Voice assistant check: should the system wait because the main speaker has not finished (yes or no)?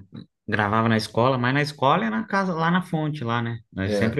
no